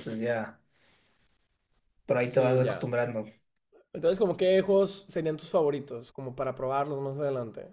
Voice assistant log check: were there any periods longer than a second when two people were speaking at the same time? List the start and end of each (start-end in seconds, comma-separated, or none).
none